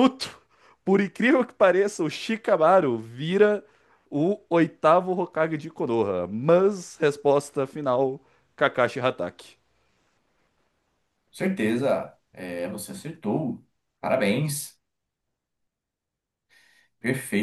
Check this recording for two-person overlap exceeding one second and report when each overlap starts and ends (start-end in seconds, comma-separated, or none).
none